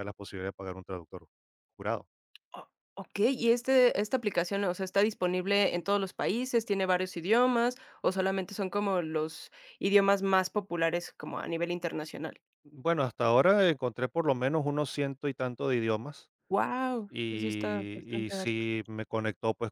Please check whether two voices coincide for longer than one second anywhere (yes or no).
yes